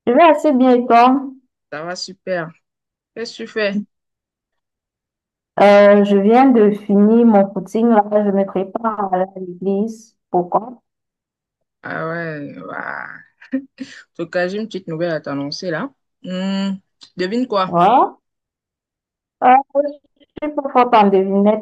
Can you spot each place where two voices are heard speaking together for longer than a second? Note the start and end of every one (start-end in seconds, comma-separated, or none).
none